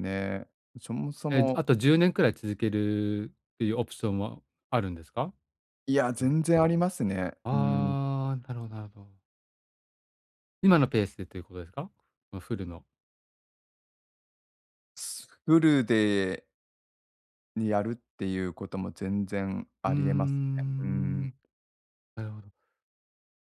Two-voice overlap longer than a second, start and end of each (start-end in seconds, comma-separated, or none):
19.9-21.3